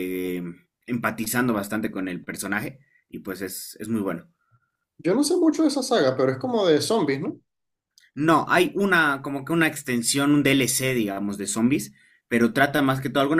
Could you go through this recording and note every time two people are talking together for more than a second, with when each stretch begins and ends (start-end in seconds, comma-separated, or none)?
none